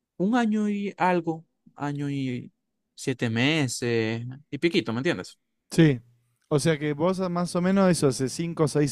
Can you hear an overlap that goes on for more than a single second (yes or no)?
no